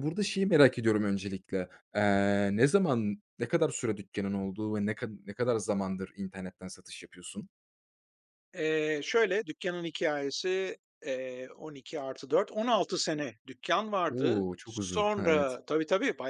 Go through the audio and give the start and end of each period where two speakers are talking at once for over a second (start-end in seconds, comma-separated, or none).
14.1-15.6